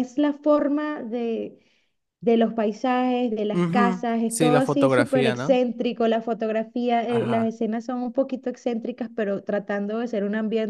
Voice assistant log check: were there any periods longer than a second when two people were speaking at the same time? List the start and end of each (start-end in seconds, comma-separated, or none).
3.5-5.6